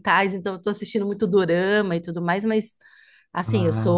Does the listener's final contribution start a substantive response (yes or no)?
no